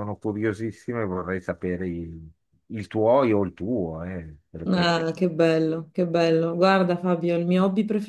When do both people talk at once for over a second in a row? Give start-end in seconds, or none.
none